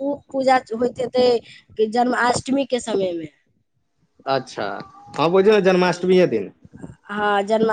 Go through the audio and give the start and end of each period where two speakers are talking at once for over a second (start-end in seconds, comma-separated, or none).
none